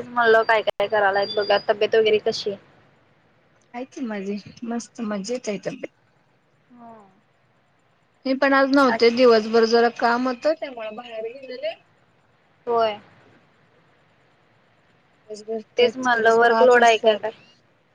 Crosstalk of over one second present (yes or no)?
yes